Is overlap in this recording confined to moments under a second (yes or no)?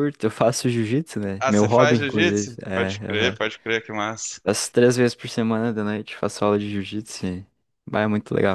no